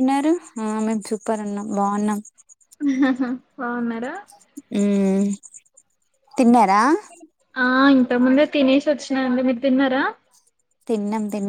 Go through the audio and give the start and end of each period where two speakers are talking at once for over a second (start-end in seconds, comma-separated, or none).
none